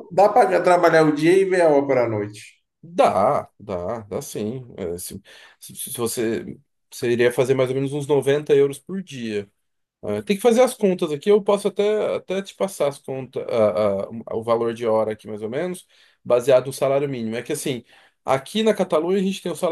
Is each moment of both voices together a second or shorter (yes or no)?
yes